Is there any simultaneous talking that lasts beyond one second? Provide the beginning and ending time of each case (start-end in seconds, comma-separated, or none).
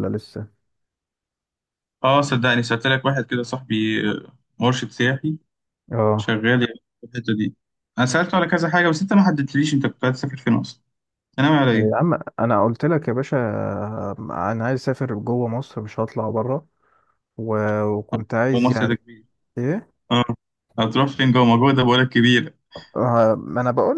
none